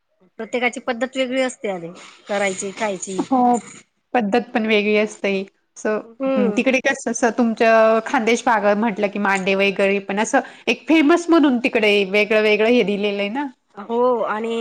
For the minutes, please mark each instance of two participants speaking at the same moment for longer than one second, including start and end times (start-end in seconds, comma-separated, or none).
none